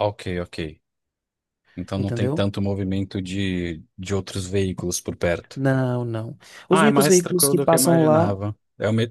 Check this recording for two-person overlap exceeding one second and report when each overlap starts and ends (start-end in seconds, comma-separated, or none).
6.7-8.3